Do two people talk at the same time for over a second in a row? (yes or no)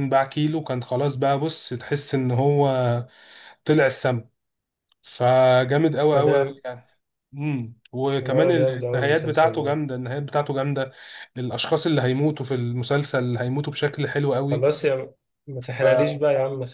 yes